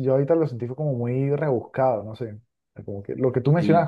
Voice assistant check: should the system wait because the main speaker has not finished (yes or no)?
yes